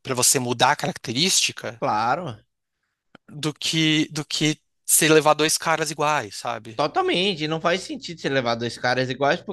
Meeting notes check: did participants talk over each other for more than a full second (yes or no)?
no